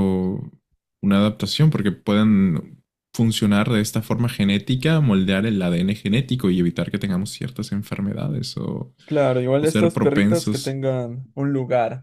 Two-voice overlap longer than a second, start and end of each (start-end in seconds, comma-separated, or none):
9.6-10.8